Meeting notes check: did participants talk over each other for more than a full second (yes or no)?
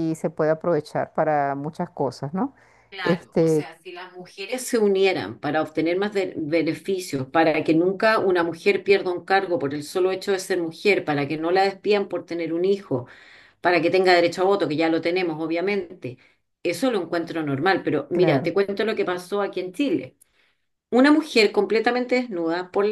no